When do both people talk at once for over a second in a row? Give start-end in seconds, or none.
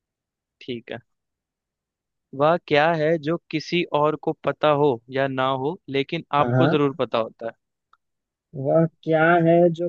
none